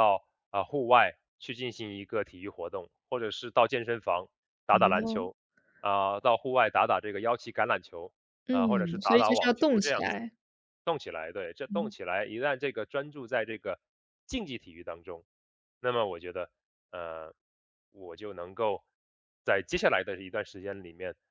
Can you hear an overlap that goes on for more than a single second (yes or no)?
yes